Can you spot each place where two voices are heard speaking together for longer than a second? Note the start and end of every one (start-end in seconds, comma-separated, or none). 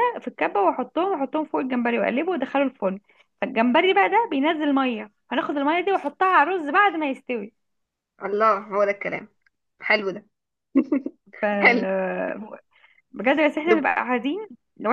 none